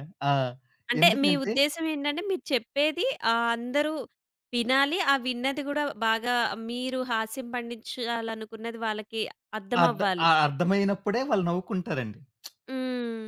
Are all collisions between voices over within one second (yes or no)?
yes